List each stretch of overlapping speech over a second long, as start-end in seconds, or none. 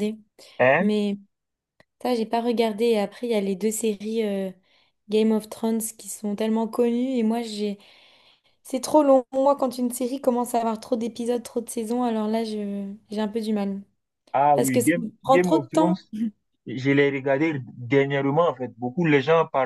14.5-16.0